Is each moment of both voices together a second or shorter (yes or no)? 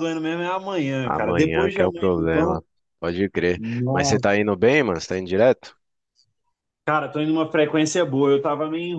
no